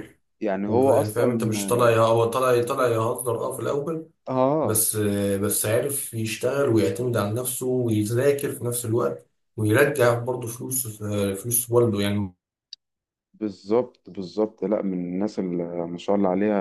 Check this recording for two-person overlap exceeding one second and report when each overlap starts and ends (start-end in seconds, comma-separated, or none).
0.7-1.9